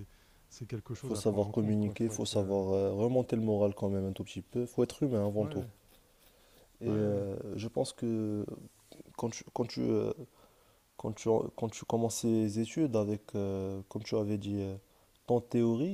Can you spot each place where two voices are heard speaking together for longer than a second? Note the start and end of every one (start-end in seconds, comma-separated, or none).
1.0-2.6